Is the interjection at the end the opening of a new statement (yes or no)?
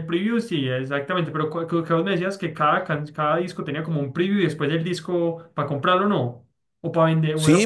yes